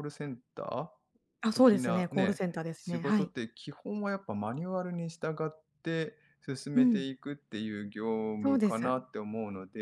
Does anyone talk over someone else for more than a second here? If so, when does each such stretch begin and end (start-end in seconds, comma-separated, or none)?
1.5-3.3